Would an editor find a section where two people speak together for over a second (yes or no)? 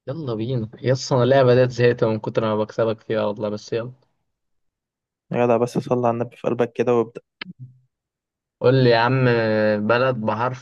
no